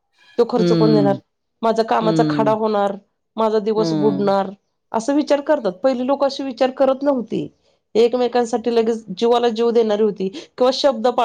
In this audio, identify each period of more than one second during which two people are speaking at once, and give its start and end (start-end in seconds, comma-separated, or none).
none